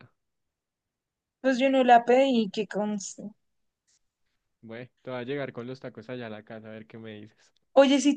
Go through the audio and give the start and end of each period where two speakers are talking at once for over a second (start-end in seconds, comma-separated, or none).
none